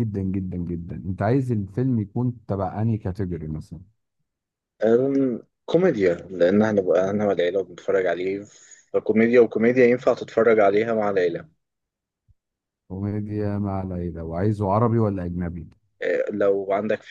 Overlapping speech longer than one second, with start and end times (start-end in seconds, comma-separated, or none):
none